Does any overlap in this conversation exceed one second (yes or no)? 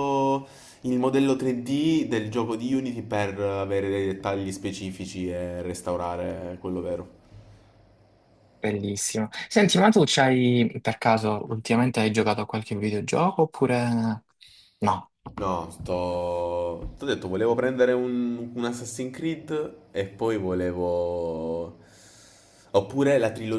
no